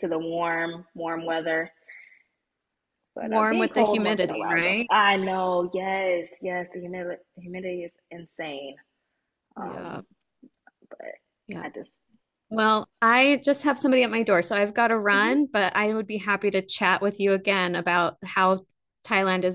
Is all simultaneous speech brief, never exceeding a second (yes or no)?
no